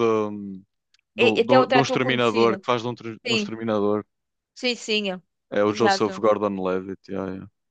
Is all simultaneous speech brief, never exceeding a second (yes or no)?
no